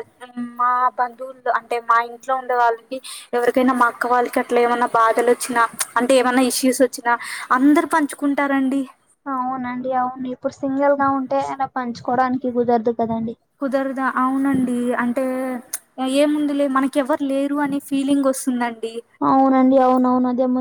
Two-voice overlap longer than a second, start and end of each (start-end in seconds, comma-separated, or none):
none